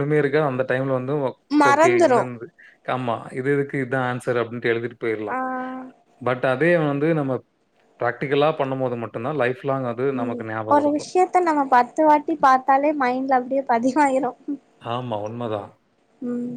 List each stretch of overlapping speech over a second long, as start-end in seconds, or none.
none